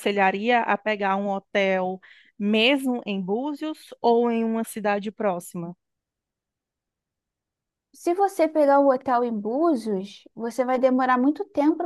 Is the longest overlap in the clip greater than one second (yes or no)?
no